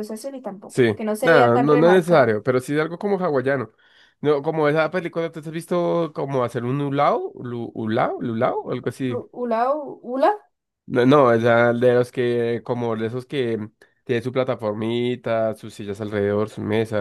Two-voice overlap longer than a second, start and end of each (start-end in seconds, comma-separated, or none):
0.7-2.3